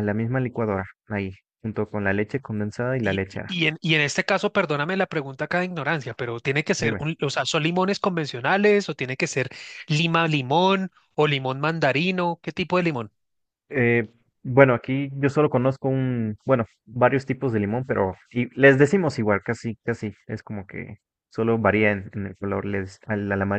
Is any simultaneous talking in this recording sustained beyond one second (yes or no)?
no